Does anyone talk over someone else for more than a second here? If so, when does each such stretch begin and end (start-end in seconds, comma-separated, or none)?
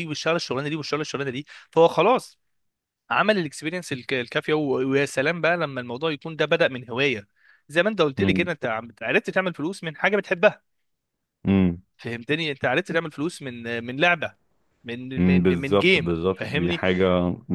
15.2-16.8